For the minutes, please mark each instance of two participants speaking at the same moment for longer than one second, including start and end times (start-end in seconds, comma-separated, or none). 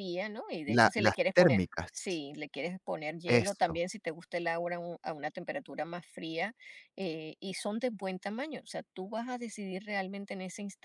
0.7-2.2